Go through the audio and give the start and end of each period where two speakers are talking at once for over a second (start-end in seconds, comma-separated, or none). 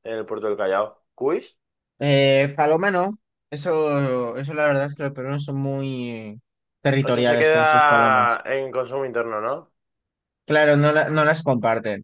7.1-8.4